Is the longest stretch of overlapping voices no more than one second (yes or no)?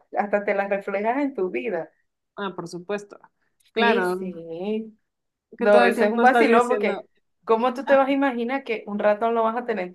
no